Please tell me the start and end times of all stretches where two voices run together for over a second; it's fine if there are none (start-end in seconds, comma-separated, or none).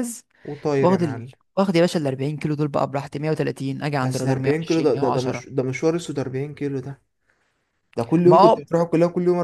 4.0-5.5